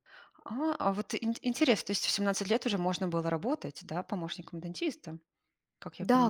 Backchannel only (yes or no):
no